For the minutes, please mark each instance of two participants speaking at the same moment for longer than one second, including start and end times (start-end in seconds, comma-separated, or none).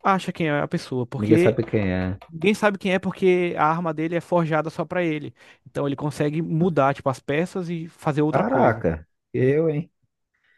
none